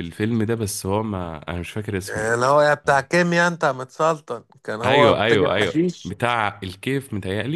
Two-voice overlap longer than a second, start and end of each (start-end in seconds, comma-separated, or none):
4.8-6.1